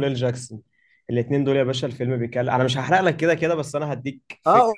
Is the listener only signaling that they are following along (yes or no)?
no